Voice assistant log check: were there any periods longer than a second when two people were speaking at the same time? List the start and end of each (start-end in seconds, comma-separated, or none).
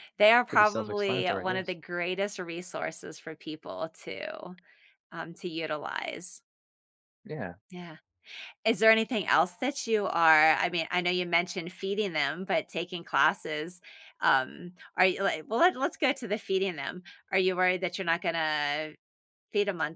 0.5-1.8